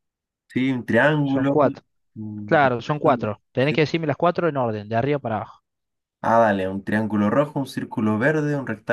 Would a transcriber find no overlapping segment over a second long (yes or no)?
no